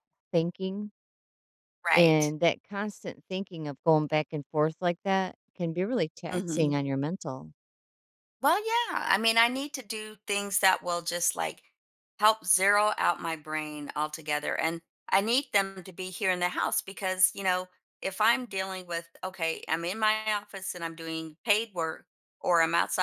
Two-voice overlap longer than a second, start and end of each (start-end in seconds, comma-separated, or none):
none